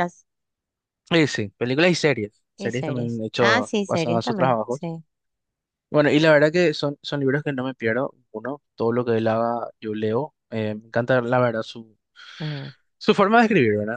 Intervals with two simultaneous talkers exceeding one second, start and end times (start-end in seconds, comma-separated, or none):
2.6-4.9